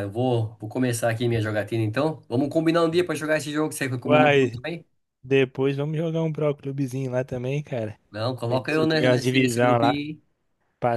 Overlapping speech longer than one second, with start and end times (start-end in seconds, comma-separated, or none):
8.5-10.0